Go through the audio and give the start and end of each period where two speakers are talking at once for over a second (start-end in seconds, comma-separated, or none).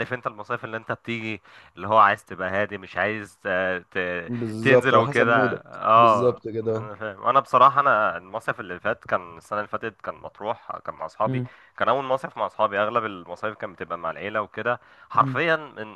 4.6-6.9